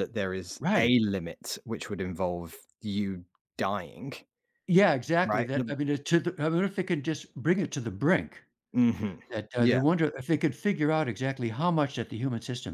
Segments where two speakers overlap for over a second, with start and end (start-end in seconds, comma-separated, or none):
none